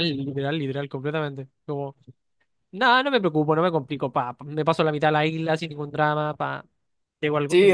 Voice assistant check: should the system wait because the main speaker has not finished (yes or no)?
no